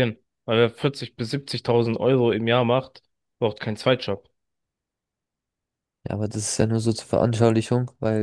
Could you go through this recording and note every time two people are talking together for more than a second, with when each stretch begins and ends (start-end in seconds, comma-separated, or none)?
none